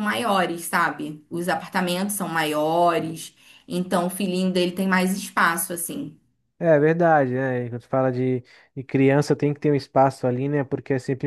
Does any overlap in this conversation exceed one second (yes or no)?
no